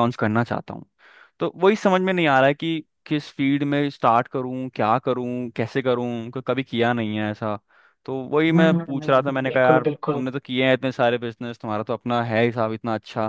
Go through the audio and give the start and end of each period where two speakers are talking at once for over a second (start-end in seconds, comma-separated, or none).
8.5-10.3